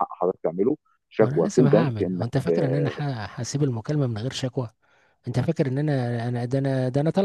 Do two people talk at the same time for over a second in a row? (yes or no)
yes